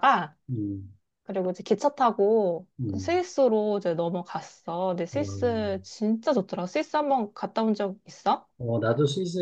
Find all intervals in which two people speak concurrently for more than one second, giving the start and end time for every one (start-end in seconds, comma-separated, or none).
none